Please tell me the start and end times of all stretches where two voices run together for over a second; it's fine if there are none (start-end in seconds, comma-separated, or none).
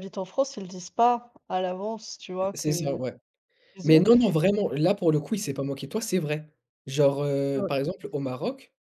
none